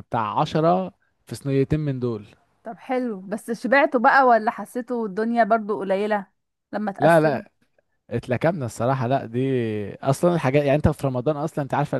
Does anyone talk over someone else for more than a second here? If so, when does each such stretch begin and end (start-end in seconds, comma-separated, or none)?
none